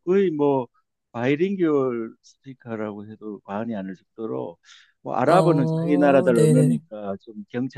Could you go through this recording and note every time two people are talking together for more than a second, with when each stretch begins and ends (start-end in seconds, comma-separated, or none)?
5.2-6.8